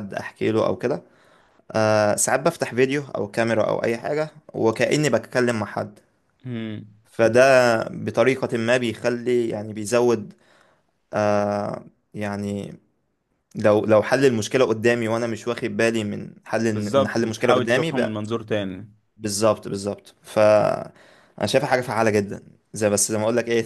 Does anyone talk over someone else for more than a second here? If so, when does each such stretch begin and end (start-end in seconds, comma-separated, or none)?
16.7-18.2